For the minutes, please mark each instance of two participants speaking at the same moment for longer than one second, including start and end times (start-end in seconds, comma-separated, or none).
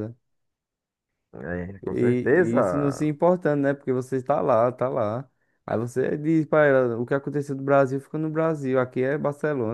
1.8-3.1